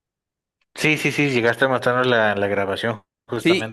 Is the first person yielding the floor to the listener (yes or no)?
yes